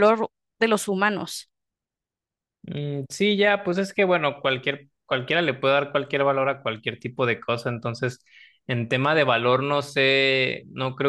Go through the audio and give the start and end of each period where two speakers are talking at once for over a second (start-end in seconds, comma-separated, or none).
none